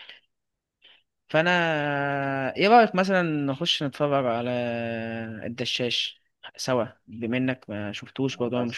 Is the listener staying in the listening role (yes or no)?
no